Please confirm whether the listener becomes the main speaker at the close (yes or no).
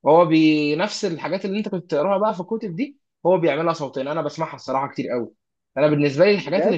no